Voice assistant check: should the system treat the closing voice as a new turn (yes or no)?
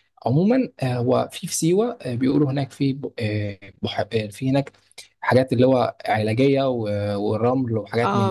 yes